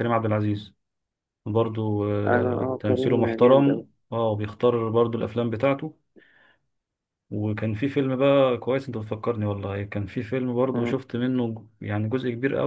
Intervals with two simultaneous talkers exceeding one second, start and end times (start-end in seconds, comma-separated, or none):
2.2-3.8